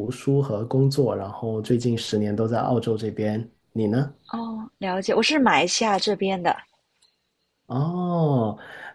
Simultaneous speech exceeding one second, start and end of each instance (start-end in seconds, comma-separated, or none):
none